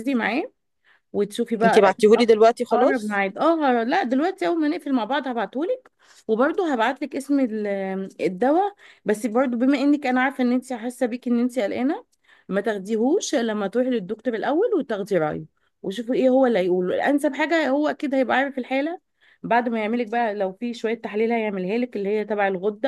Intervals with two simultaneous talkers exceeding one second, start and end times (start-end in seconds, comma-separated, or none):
none